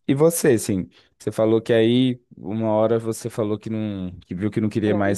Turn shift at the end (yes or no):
no